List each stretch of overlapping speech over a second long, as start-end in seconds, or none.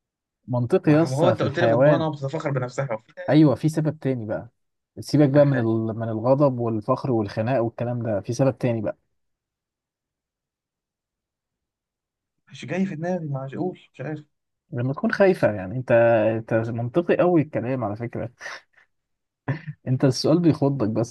0.8-2.1